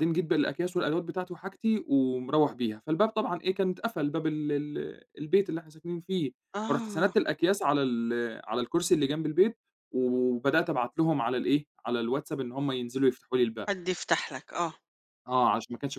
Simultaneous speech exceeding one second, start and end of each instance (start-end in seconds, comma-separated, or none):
none